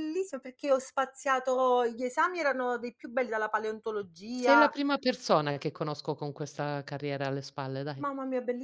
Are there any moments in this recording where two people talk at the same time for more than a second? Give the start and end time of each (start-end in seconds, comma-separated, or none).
none